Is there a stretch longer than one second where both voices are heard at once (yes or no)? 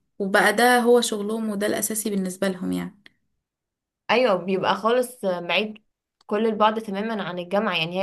no